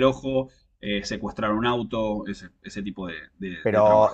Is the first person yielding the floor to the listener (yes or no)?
yes